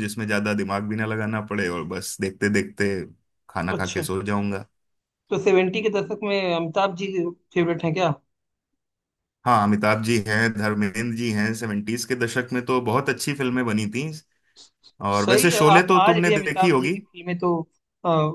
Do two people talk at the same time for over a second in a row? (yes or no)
yes